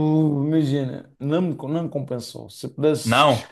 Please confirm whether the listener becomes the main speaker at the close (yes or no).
no